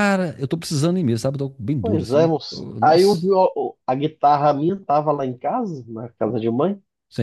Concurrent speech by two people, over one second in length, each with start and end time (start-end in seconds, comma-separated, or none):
1.8-3.3